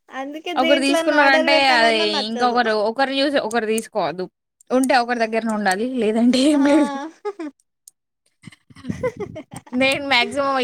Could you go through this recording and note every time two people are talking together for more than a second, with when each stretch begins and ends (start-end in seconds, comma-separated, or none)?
0.6-2.5